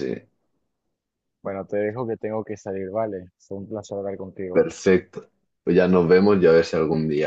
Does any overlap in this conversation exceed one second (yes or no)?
no